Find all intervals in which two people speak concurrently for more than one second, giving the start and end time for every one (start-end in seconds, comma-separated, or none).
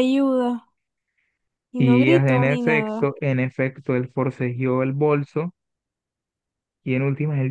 1.8-3.1